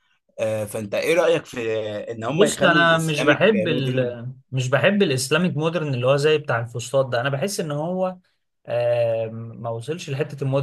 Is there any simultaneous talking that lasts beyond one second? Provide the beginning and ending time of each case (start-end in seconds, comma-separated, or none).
2.3-4.1